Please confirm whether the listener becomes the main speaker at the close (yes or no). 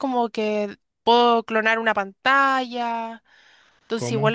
no